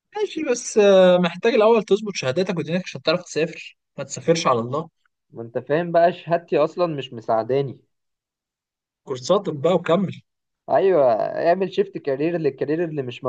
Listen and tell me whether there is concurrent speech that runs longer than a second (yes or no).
no